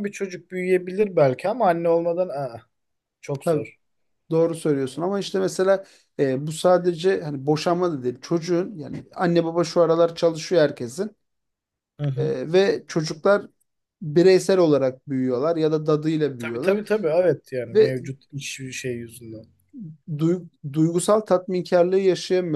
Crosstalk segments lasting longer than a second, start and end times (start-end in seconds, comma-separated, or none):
none